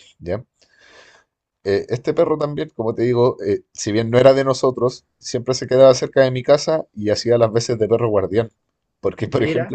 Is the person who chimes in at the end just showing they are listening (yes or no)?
yes